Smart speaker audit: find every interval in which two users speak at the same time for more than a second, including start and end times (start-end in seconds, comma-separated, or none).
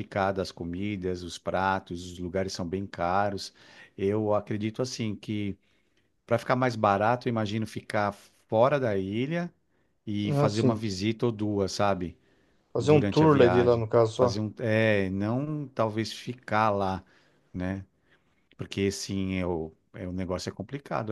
12.8-14.4